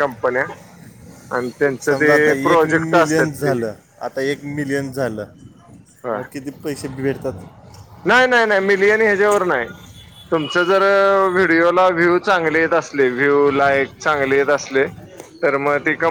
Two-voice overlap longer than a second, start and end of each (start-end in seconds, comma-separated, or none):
1.9-3.6